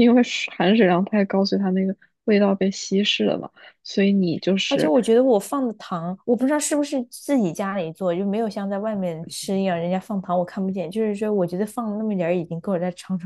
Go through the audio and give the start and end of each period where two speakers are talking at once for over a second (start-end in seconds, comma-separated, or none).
none